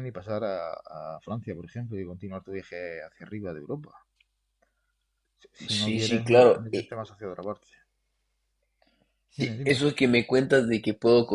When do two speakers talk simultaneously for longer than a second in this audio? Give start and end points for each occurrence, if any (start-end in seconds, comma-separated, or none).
5.8-7.0